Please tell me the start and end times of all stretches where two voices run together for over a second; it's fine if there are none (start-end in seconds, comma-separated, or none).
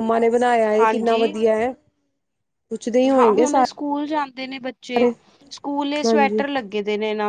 none